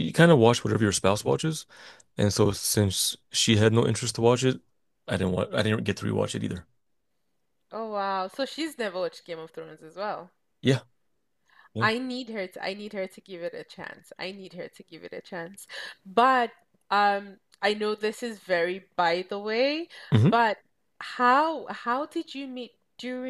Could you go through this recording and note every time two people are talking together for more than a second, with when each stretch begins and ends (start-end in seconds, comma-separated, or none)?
none